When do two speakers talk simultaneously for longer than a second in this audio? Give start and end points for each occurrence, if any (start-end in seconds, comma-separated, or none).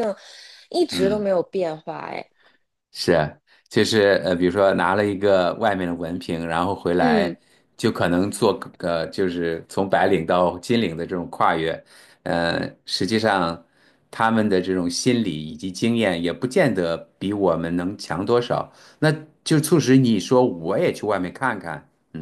none